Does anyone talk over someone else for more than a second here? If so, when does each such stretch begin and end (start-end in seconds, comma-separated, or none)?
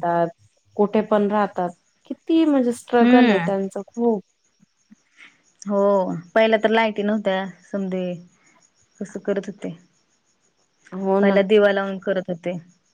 none